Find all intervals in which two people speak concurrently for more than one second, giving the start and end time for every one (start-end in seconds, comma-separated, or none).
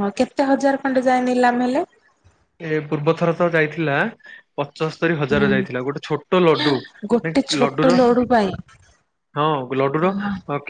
none